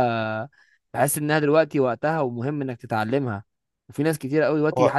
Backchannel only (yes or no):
yes